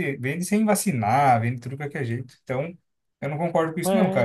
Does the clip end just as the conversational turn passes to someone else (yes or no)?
yes